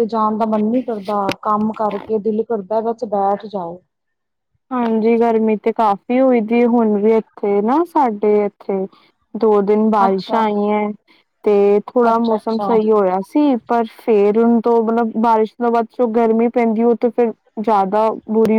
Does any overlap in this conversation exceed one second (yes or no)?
no